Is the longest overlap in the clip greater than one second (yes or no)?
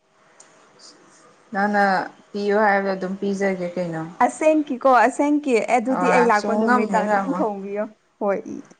yes